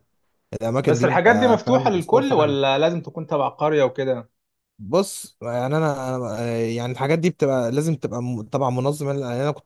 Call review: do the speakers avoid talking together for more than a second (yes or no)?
no